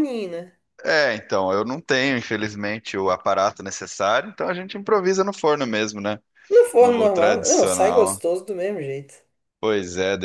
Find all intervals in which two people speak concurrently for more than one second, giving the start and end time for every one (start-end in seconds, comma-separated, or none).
6.8-8.2